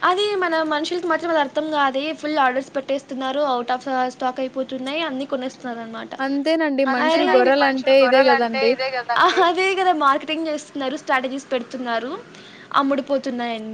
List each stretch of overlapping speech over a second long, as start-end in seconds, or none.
none